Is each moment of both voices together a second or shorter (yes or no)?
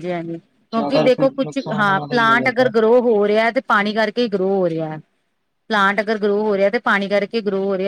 no